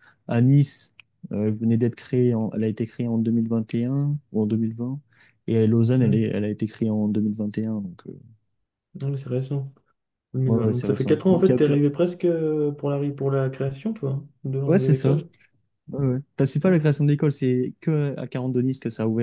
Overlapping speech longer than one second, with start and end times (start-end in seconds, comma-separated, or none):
10.4-11.7